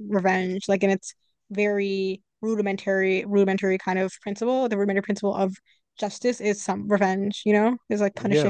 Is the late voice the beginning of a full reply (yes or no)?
yes